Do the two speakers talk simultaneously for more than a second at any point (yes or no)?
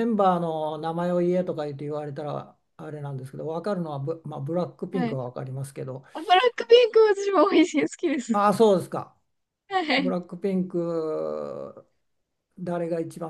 no